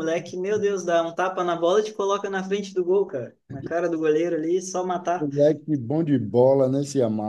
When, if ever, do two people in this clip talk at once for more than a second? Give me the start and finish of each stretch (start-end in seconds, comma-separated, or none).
none